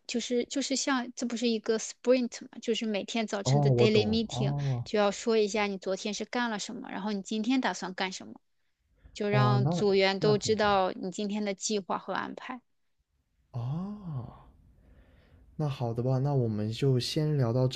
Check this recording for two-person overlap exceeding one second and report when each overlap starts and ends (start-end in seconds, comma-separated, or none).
3.4-4.8, 9.3-10.8